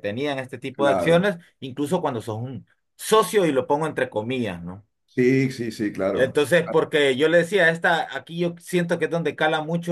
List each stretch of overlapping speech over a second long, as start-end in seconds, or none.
none